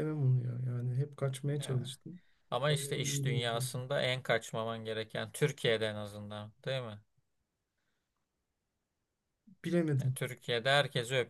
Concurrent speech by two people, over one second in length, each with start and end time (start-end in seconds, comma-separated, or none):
2.6-3.8